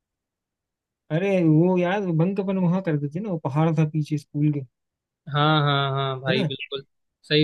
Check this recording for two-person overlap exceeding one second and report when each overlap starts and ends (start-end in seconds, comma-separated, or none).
none